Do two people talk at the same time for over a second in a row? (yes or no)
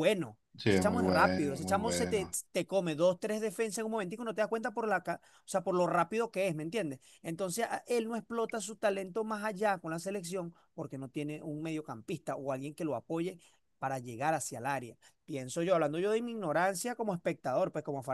yes